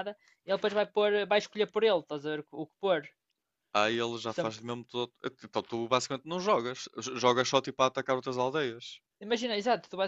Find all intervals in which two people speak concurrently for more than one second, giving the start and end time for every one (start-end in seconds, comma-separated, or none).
none